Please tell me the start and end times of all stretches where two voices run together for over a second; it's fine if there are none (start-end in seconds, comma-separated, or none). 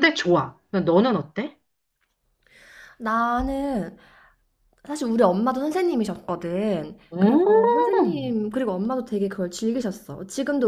7.1-8.3